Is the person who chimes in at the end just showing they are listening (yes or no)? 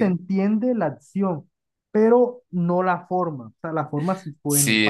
no